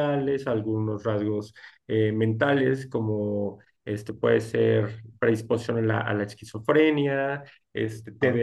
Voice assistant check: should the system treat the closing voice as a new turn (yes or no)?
no